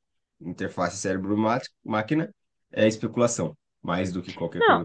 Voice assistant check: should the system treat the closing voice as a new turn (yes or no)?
yes